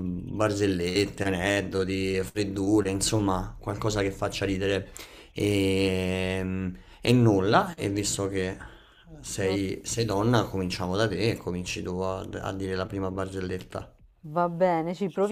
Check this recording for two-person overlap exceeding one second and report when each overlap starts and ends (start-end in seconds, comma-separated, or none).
none